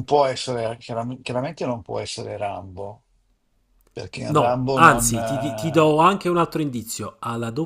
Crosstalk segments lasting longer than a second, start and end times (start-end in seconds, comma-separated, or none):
4.3-6.0